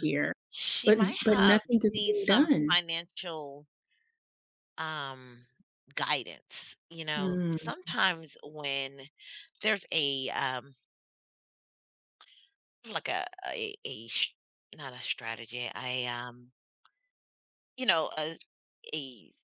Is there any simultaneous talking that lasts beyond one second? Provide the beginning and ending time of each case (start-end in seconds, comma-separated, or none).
0.9-2.8